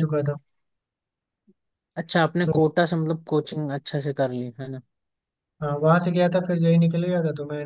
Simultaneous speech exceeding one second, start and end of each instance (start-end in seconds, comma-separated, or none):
none